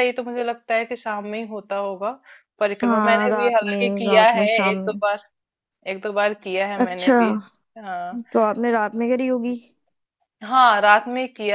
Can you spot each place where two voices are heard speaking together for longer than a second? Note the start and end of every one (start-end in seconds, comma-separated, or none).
2.8-5.0